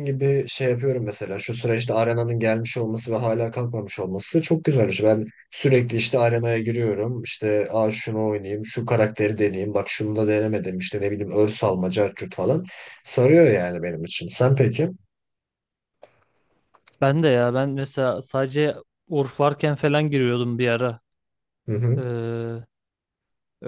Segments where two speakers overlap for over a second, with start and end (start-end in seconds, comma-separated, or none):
none